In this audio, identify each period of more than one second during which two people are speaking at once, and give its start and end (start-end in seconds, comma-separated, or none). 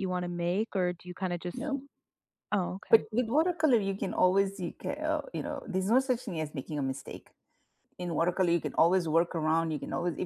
none